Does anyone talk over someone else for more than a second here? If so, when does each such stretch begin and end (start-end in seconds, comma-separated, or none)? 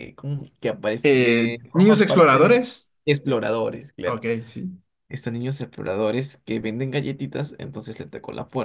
1.0-2.6